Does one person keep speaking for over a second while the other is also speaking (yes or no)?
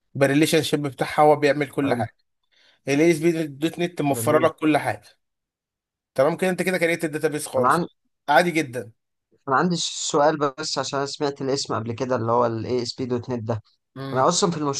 no